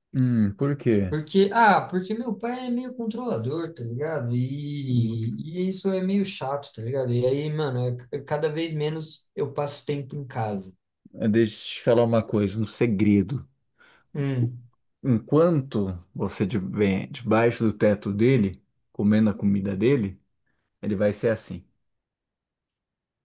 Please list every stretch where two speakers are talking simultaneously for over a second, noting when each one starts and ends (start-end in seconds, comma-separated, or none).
none